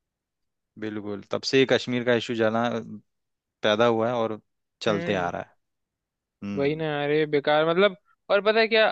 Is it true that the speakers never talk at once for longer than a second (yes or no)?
yes